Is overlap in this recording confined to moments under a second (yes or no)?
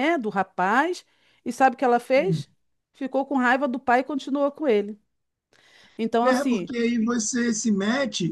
yes